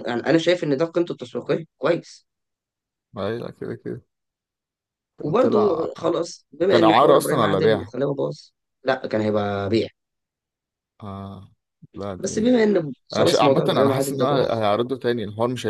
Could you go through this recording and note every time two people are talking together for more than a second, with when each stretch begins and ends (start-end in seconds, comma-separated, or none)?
6.7-7.9, 13.2-14.6